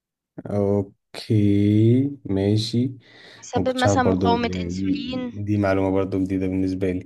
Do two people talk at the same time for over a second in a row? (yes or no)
yes